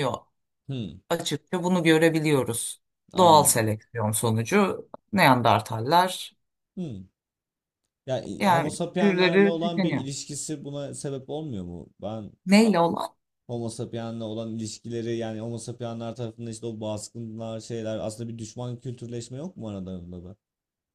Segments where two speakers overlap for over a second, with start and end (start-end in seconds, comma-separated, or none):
8.4-10.0